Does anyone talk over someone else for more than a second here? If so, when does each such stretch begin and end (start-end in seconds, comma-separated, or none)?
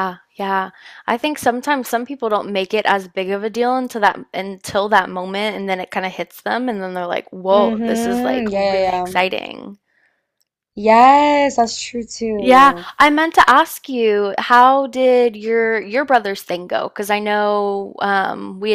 7.5-9.2